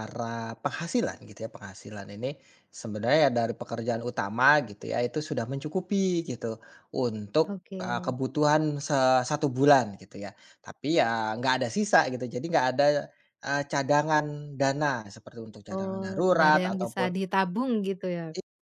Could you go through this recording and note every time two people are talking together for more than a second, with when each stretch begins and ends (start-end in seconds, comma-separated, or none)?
15.7-17.1